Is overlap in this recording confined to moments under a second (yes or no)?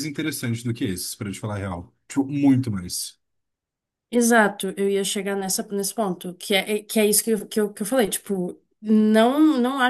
yes